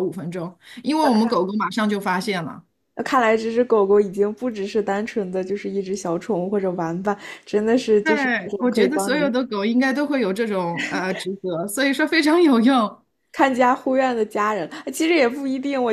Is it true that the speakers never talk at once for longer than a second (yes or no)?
no